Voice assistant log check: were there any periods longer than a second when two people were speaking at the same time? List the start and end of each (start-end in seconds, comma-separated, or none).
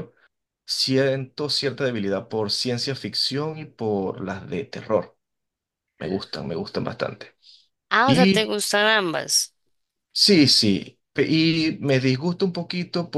none